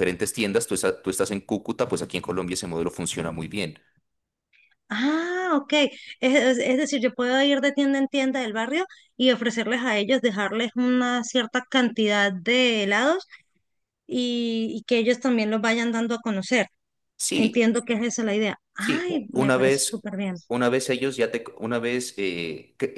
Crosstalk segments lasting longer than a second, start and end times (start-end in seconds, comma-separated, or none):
18.8-20.1